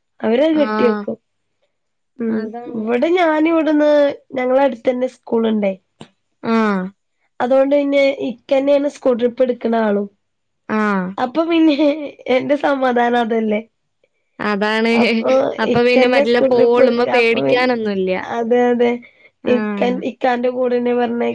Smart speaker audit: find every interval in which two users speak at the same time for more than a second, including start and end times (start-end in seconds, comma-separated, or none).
15.8-17.7